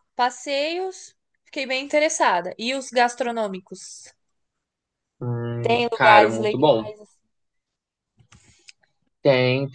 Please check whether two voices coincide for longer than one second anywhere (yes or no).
yes